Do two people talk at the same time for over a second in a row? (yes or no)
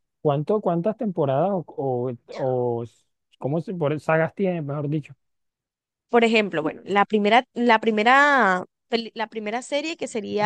no